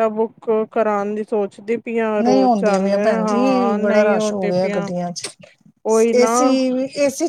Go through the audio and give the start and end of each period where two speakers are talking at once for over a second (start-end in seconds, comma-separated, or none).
2.2-4.9